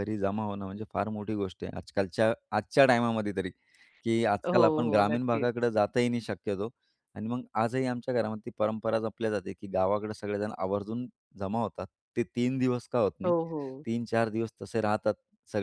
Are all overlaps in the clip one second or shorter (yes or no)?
no